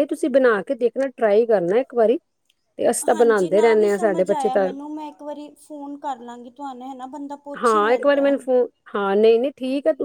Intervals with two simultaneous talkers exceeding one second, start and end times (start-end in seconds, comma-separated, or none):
3.1-4.7